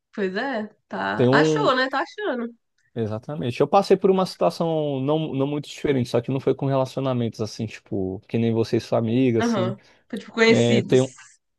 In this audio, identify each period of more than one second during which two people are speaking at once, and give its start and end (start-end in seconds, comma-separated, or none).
none